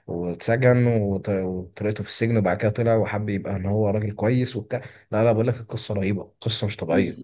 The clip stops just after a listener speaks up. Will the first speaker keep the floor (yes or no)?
no